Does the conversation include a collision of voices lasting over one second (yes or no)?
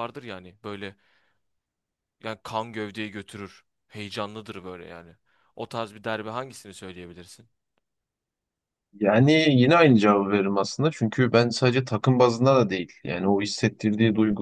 no